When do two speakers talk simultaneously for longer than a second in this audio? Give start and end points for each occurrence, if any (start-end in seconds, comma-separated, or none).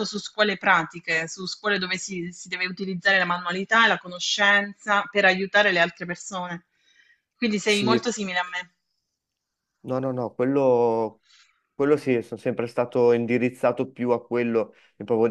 none